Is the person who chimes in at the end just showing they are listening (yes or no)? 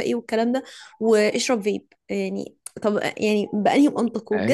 yes